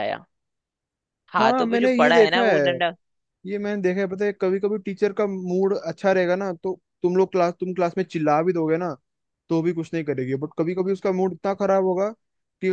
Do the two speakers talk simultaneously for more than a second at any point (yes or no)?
yes